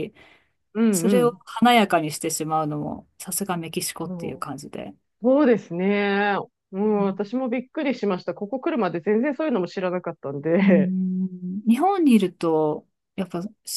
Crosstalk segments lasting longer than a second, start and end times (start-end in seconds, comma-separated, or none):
none